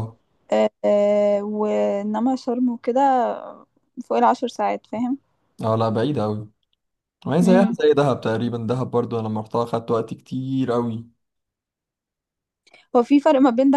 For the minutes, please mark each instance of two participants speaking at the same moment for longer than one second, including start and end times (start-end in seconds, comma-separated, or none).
none